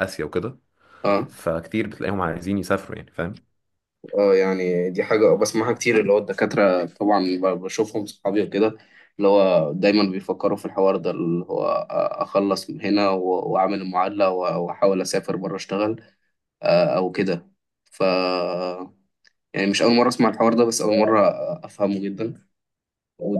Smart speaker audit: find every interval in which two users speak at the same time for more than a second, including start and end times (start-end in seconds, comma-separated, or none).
none